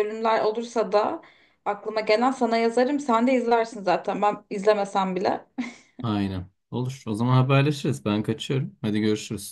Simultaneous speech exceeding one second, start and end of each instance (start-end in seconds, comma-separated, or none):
none